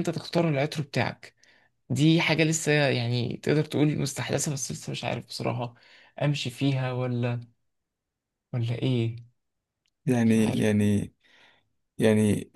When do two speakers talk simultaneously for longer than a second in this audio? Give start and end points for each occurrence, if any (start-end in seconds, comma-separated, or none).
none